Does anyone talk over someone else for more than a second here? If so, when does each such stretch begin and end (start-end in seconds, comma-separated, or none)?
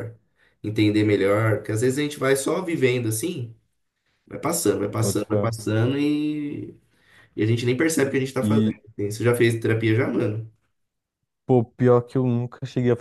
none